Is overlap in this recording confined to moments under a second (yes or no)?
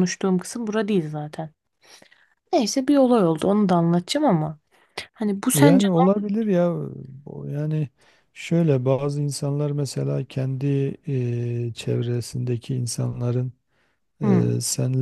yes